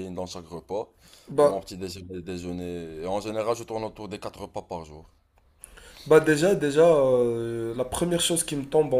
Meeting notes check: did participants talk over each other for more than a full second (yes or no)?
no